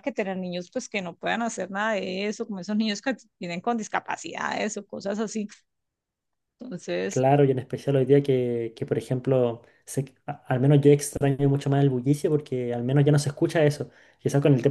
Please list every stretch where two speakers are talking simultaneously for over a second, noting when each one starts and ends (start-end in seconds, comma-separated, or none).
none